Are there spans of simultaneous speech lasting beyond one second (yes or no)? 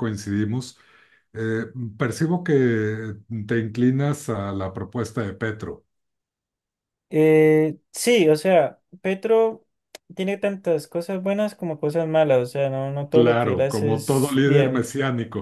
yes